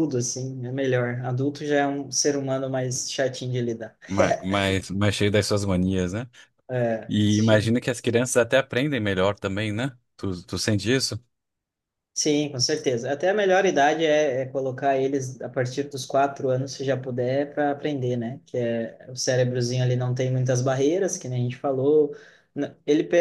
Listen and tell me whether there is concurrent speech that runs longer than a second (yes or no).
no